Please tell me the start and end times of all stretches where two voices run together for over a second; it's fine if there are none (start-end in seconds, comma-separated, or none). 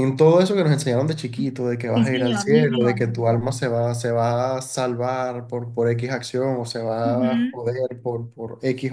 1.9-3.2